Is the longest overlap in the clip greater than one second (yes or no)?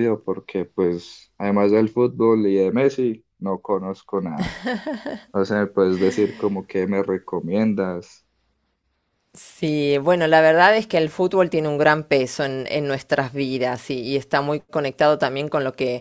no